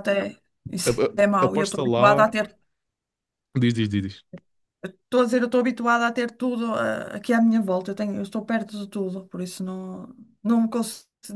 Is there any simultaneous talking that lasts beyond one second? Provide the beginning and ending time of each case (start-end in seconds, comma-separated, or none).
0.8-2.3